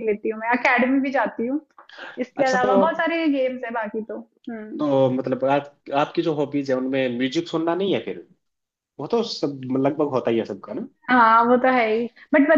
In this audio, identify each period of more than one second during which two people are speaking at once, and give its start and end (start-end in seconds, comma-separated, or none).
none